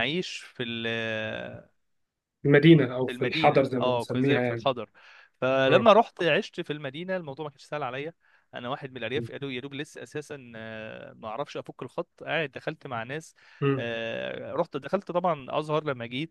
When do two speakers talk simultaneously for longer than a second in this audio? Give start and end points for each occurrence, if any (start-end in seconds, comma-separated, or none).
3.0-4.7